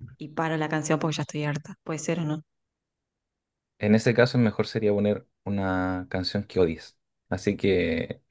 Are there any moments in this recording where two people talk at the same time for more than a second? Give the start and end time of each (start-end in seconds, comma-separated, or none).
none